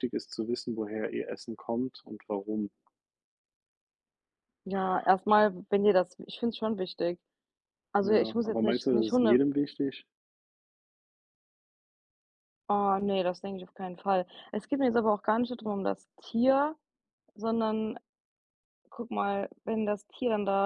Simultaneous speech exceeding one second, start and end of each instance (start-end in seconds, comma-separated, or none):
8.0-9.4